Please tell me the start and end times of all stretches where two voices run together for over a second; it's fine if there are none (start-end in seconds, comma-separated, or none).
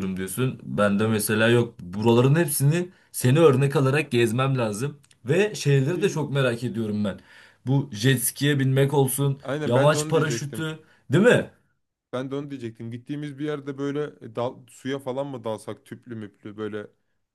9.4-10.7